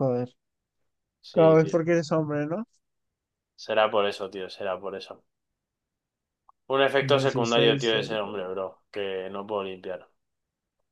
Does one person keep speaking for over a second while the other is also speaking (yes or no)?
yes